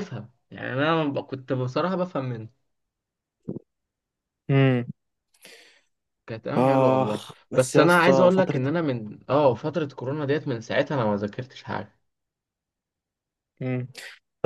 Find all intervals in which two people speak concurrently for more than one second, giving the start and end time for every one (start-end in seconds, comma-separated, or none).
6.6-8.6